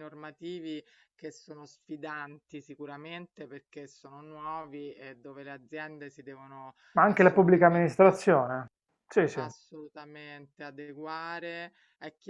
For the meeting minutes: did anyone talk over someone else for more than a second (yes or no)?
yes